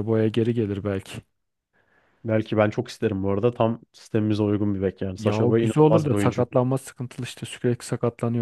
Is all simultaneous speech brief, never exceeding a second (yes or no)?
no